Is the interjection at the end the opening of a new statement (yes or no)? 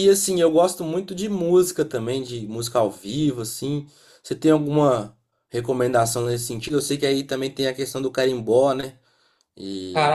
yes